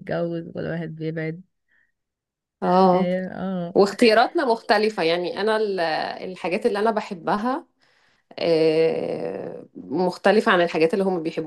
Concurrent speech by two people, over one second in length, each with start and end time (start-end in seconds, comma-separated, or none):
none